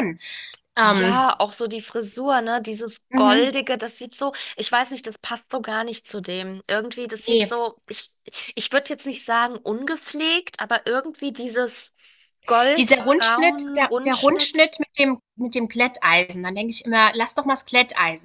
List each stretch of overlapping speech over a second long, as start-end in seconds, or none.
12.8-14.6